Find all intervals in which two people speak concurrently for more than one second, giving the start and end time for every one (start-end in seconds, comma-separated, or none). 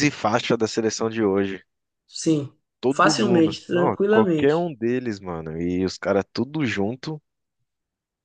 2.8-4.7